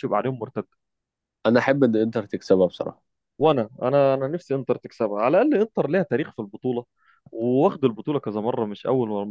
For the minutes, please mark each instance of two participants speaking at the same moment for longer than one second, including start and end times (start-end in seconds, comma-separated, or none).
none